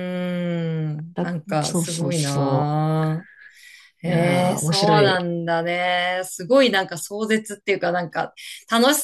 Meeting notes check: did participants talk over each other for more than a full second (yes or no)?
yes